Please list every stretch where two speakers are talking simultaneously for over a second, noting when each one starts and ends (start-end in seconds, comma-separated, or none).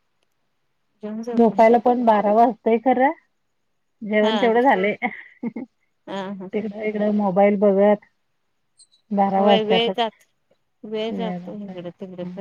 none